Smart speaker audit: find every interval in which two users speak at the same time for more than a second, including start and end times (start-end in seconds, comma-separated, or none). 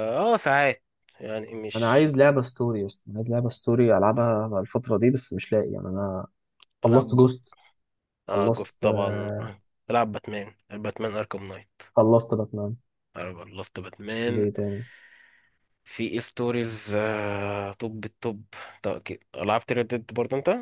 8.3-9.5